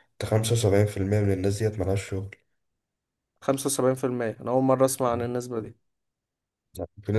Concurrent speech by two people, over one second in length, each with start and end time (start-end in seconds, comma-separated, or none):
none